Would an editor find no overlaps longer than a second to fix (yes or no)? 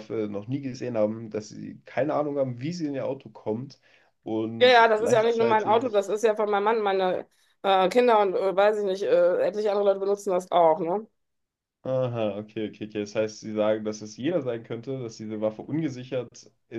no